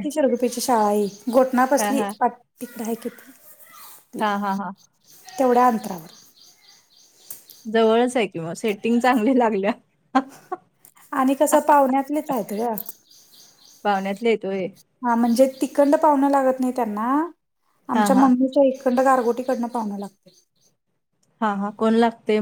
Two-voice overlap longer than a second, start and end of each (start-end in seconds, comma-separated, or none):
none